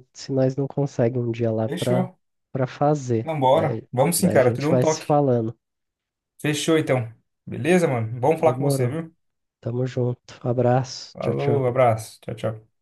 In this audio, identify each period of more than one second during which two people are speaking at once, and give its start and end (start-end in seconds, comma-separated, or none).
3.2-5.2